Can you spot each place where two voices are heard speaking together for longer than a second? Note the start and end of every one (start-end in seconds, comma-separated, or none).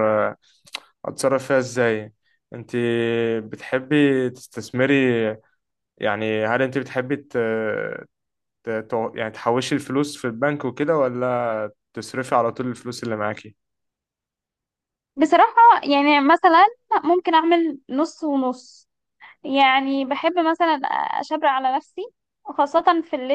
none